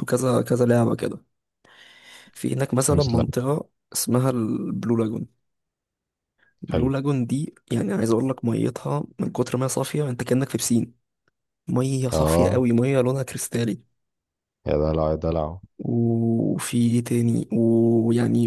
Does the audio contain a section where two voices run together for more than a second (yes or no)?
no